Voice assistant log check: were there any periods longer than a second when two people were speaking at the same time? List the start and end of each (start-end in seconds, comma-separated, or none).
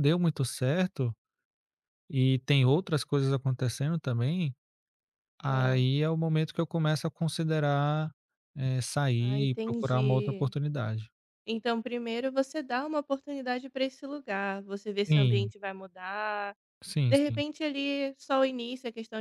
9.2-10.5